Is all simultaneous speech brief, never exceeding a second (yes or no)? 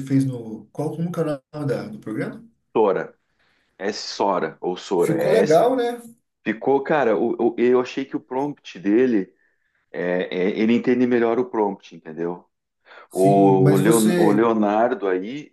no